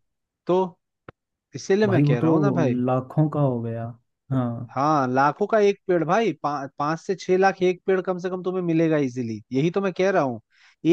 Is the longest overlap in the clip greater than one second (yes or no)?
no